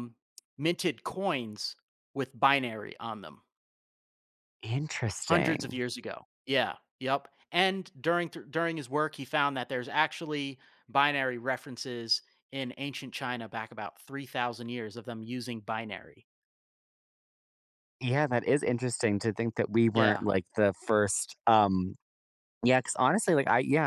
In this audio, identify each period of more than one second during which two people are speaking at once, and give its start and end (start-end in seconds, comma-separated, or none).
none